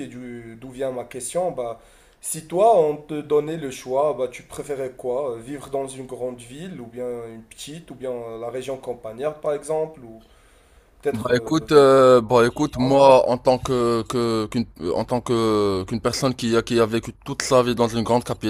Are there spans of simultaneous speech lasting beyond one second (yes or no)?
no